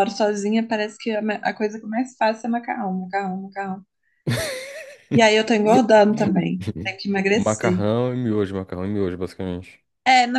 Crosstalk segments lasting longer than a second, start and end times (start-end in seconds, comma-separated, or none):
none